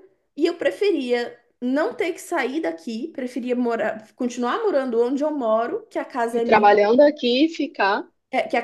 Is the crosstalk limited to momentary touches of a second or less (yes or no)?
yes